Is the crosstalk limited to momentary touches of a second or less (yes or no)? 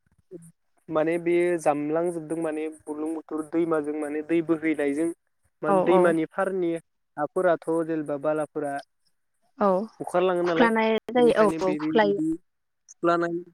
yes